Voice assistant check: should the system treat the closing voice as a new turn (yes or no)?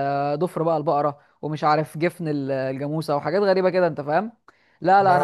no